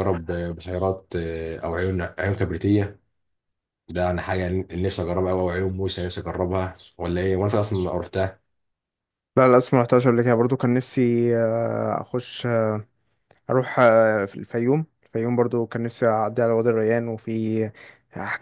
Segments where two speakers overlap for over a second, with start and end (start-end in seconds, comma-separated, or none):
none